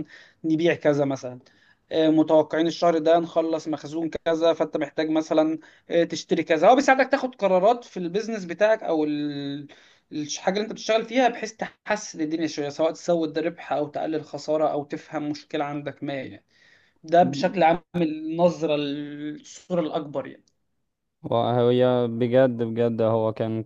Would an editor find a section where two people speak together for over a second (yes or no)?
no